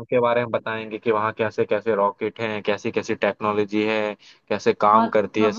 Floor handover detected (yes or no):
yes